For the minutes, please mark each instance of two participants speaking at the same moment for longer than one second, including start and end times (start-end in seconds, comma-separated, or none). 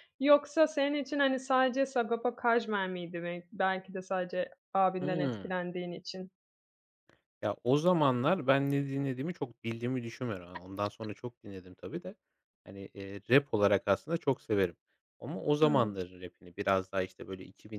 none